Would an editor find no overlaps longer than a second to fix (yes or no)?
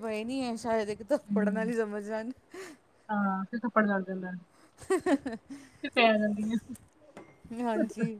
yes